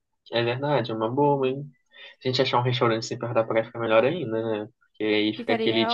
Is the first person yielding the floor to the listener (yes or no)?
no